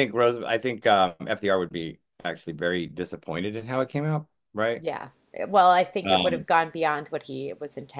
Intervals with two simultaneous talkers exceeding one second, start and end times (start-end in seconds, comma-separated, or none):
none